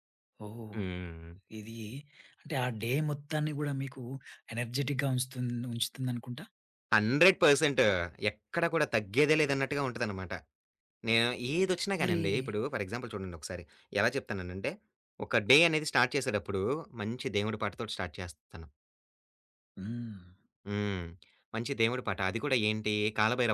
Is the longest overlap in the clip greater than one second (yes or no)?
no